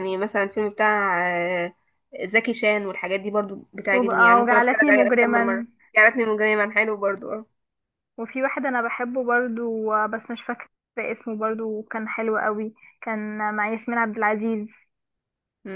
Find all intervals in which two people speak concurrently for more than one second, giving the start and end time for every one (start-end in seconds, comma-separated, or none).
3.9-5.7